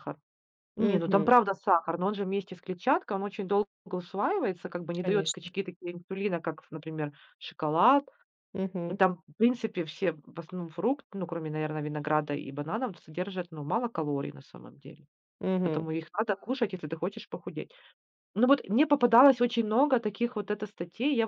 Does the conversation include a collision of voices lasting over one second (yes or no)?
no